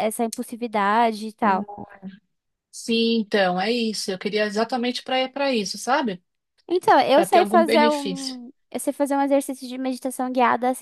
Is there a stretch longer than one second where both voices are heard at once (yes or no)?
yes